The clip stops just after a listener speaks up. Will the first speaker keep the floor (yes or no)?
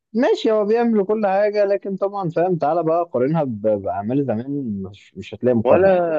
no